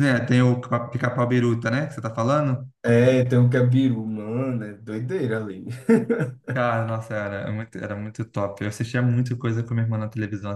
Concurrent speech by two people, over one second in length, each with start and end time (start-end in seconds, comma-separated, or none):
none